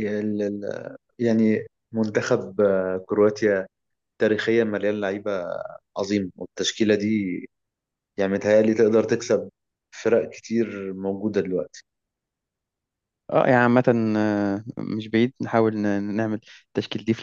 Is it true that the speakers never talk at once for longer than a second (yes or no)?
yes